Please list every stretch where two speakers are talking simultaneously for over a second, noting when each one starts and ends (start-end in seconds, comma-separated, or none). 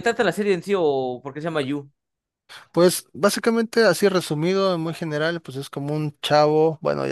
none